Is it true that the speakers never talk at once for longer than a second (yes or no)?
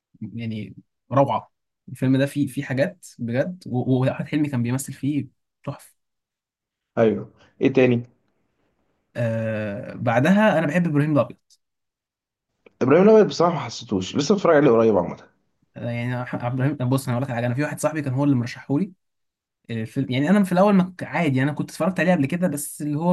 yes